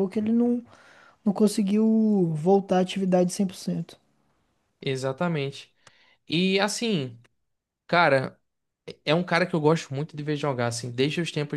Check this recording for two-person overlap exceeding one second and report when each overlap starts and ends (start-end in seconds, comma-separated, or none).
none